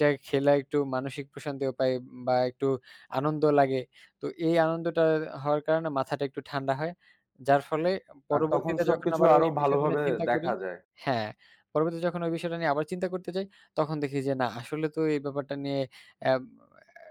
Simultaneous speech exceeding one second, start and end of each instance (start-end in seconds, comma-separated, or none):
8.3-10.5